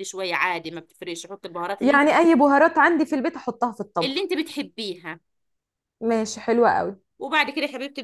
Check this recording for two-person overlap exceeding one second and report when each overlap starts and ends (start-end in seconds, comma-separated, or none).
none